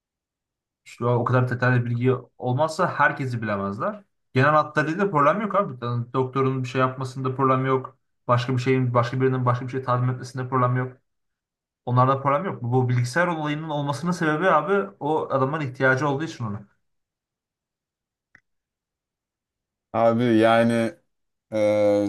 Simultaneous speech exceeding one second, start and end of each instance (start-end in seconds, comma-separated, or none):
none